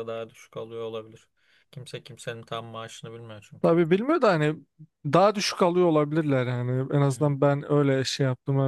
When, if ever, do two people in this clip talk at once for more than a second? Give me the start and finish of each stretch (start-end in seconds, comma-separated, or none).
none